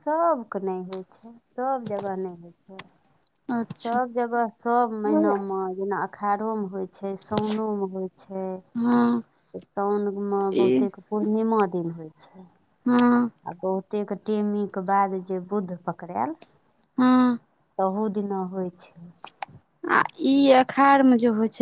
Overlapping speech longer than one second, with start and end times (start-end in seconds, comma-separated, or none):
none